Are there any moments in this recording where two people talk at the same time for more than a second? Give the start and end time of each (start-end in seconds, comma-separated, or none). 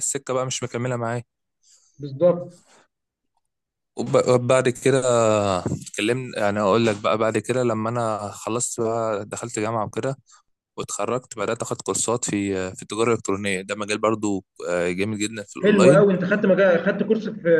none